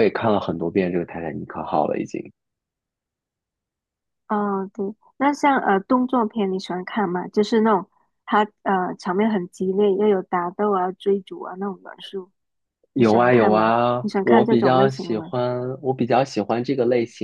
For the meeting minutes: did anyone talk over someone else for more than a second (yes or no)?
yes